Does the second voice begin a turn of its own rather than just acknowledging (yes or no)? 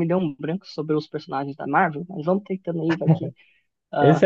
yes